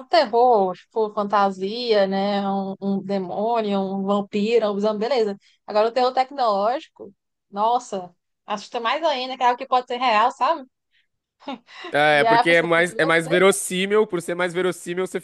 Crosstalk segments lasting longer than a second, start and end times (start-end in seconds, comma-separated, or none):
12.1-13.4